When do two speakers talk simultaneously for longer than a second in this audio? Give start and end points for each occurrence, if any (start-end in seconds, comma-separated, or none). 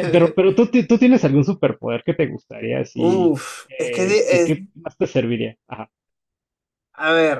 3.0-4.6